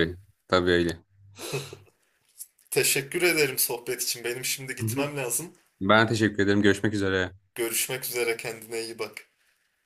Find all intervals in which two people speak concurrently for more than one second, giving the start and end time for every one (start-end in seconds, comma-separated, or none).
none